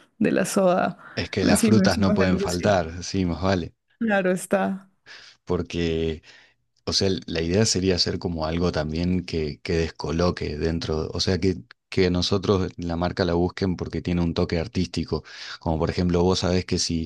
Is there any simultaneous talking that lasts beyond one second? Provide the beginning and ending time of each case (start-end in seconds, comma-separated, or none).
1.4-2.7